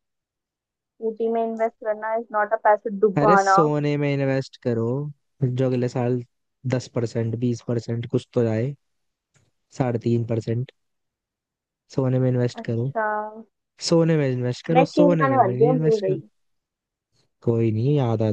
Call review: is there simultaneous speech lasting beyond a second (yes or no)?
yes